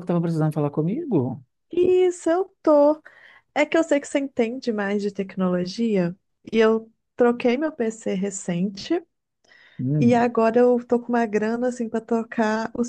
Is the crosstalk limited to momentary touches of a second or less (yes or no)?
yes